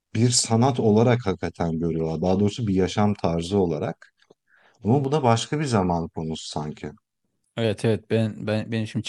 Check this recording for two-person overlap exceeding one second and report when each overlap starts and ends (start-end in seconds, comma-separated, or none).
none